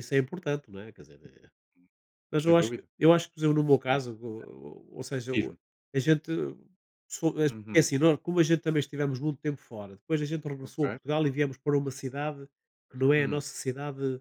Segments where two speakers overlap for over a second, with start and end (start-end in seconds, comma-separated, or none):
none